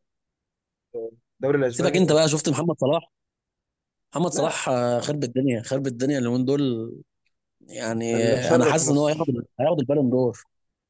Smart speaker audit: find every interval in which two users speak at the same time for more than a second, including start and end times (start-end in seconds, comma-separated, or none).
8.1-9.4